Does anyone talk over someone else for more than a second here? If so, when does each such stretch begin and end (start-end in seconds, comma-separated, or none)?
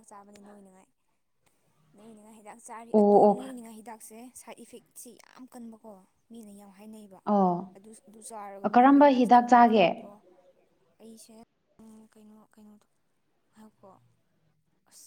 8.7-10.1